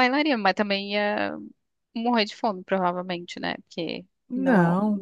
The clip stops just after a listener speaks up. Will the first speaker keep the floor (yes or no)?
yes